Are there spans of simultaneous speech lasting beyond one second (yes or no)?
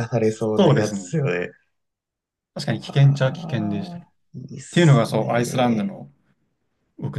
yes